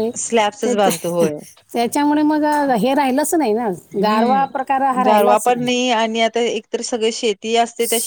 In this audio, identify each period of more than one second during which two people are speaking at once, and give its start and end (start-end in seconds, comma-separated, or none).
4.0-5.5